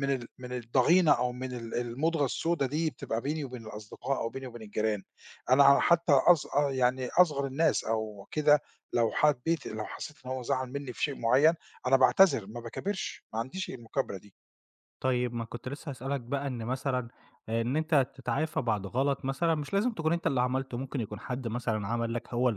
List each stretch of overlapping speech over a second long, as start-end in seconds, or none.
none